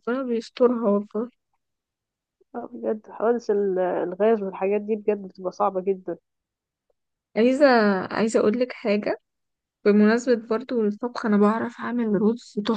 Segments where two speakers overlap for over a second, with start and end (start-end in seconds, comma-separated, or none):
none